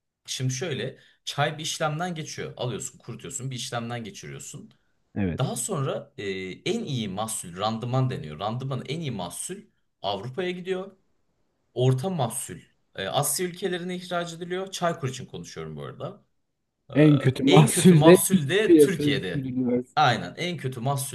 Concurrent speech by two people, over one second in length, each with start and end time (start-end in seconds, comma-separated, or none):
17.5-19.5